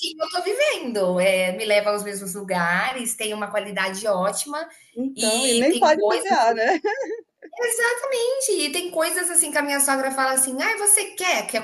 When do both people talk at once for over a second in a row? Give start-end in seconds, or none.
5.2-6.4